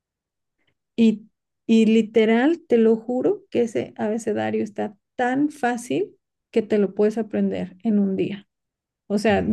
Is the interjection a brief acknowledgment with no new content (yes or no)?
yes